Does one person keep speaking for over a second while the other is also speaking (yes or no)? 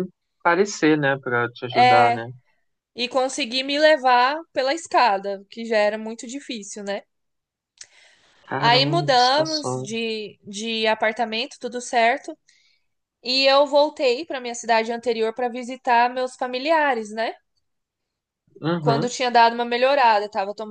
yes